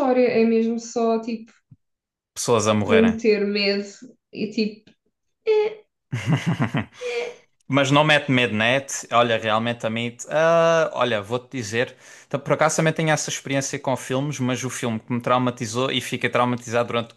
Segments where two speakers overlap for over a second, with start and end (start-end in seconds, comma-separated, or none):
none